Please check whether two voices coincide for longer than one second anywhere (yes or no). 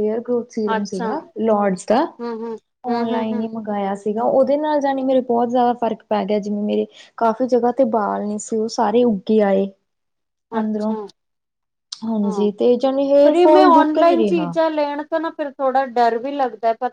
yes